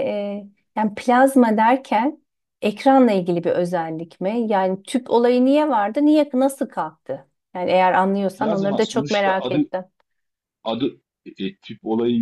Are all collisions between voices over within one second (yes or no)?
no